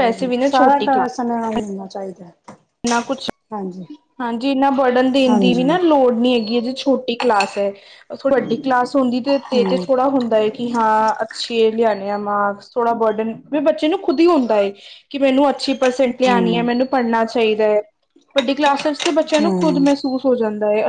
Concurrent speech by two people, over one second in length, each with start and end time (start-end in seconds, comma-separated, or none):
none